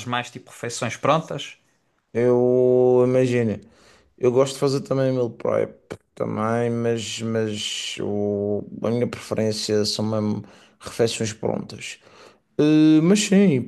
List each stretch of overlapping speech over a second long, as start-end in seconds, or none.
none